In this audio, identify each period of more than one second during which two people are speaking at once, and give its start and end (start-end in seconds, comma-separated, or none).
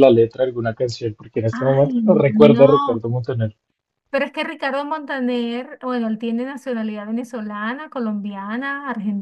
1.5-3.0